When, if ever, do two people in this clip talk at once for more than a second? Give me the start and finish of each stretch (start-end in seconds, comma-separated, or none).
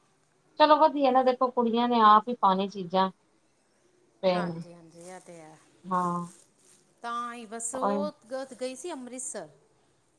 none